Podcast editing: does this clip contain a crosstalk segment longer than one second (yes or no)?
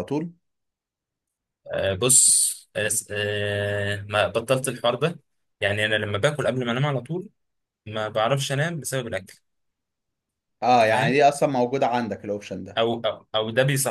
no